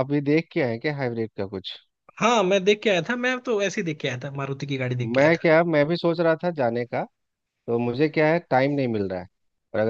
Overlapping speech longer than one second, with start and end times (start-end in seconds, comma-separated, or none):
none